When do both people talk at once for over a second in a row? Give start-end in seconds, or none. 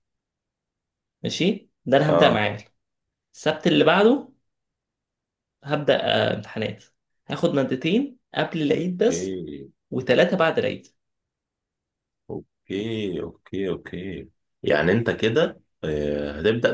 none